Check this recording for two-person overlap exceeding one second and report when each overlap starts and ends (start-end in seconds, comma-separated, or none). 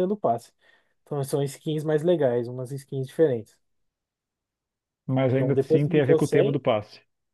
5.3-6.6